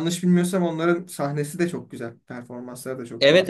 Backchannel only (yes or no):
no